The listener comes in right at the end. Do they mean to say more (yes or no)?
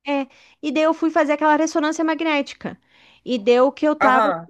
no